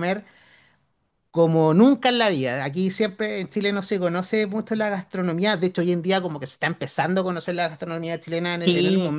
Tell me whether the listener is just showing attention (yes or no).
no